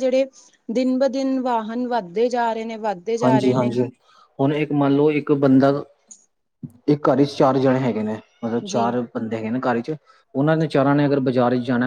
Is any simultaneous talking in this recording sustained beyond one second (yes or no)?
no